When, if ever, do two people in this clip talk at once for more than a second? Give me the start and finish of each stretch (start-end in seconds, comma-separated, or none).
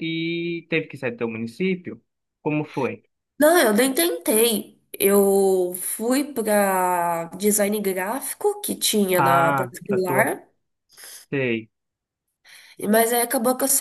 9.1-10.3